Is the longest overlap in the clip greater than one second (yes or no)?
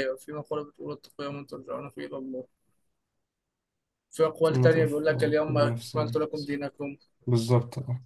yes